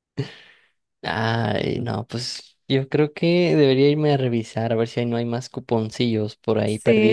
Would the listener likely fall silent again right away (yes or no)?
no